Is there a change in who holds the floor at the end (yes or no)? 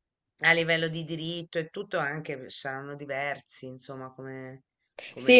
yes